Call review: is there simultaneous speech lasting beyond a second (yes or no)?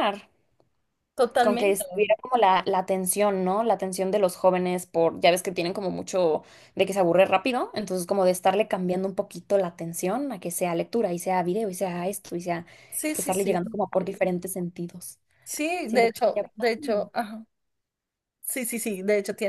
yes